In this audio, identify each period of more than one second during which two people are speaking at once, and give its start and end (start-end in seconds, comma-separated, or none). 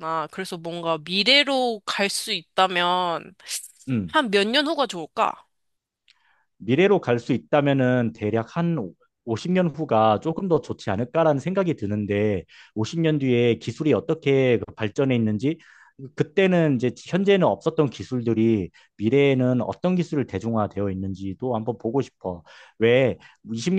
none